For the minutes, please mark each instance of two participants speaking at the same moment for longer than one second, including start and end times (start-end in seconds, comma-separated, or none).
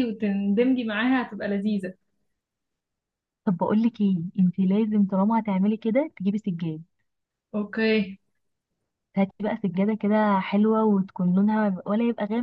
none